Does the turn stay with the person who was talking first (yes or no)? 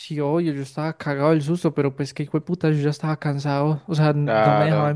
yes